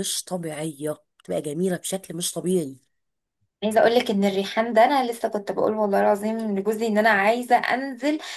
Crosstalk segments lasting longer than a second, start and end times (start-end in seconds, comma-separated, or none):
none